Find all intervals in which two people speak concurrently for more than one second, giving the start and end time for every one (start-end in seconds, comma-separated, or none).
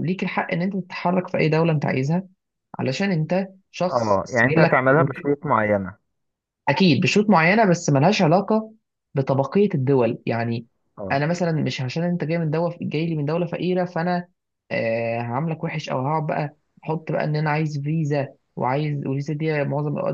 3.9-5.3